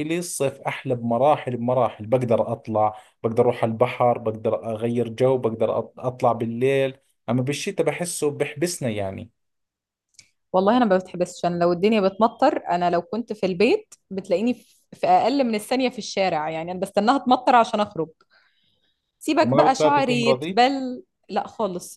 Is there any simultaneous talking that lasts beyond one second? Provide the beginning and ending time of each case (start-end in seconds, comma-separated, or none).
19.4-20.6